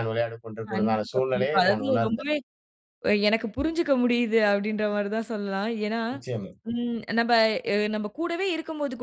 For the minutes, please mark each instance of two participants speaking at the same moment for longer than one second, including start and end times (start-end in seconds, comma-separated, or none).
0.7-2.3